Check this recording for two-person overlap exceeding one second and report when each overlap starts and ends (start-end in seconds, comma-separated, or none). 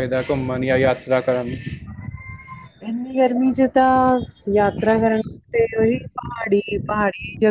none